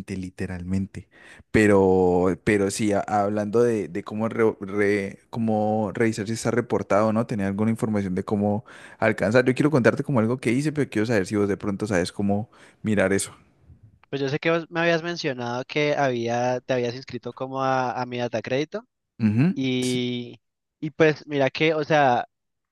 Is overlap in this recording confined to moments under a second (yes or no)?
yes